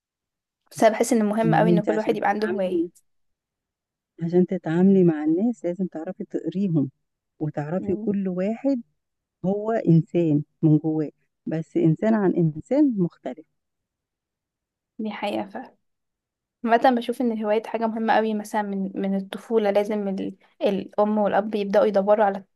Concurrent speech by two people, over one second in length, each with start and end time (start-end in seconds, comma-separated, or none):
1.4-2.8